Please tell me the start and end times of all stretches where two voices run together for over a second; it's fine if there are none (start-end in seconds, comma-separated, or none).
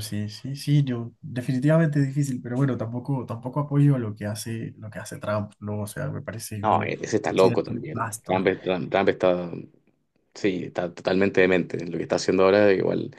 6.6-8.5